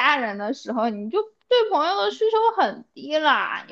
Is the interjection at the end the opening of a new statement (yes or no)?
no